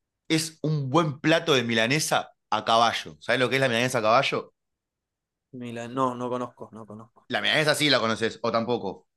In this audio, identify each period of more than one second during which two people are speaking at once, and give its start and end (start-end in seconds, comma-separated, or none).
none